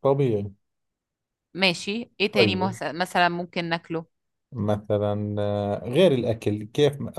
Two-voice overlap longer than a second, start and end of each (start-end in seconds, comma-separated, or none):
none